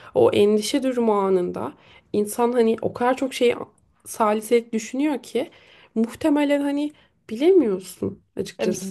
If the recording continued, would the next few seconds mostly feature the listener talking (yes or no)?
yes